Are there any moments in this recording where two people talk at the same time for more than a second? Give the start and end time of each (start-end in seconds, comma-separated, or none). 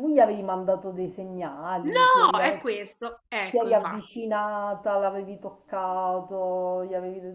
1.8-4.2